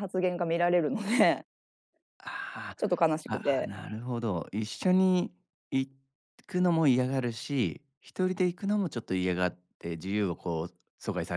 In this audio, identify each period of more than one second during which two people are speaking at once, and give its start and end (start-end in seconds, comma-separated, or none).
none